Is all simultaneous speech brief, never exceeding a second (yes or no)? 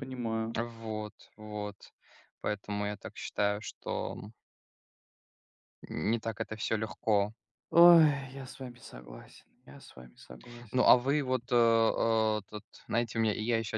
yes